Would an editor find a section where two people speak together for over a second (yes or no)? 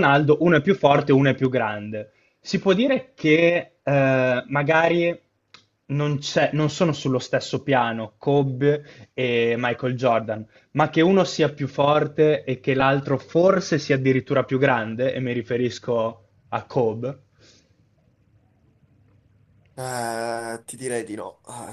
no